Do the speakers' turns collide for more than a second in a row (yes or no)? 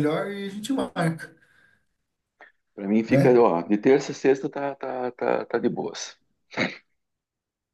no